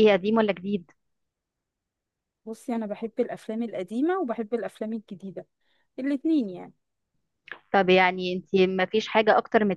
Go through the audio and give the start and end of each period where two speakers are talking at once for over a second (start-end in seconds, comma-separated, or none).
none